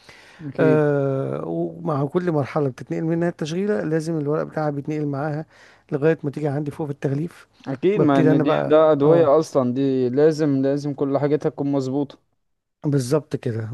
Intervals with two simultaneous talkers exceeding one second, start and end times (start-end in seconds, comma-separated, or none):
8.0-9.3